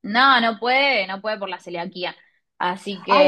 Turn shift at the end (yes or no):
yes